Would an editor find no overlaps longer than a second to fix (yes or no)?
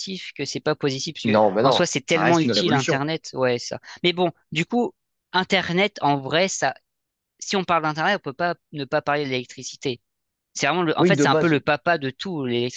no